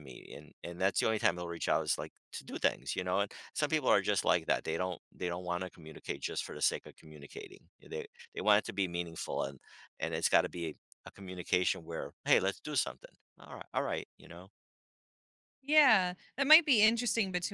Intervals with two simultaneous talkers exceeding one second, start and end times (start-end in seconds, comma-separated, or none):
none